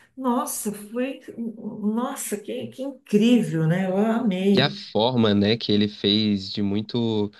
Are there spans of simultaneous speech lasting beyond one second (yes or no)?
no